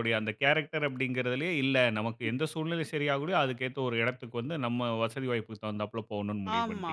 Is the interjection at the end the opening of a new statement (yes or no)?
yes